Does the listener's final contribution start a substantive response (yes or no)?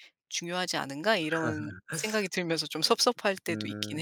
yes